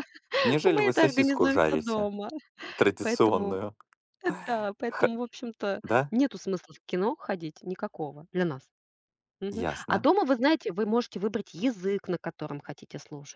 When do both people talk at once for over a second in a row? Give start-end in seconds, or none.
0.7-2.1